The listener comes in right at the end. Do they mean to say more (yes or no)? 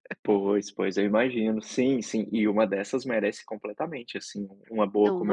no